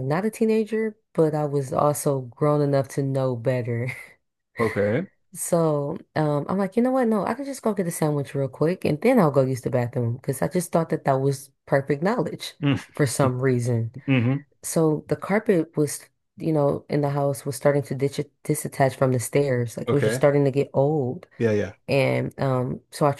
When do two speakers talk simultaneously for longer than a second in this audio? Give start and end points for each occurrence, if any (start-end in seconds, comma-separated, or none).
none